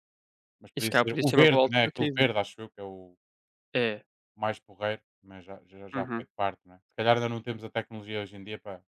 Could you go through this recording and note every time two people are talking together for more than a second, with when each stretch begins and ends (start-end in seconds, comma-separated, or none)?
0.8-2.3